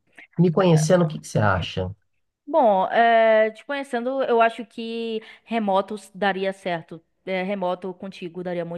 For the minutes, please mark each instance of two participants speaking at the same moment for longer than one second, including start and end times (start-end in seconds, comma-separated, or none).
none